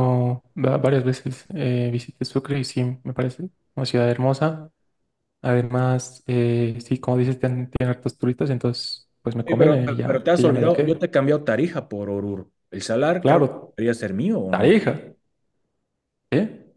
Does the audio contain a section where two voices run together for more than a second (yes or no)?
yes